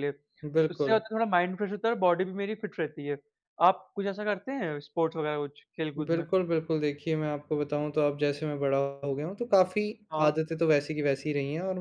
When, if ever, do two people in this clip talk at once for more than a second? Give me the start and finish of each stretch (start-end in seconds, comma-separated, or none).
none